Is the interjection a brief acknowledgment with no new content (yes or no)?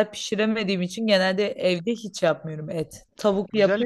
no